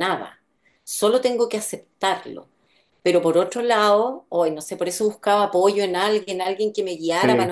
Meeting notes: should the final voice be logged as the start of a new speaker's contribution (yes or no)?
no